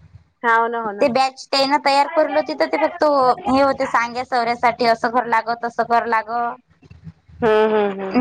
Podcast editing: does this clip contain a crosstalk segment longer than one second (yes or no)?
yes